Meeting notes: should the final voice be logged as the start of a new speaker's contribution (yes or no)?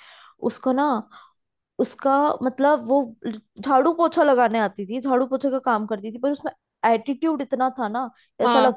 no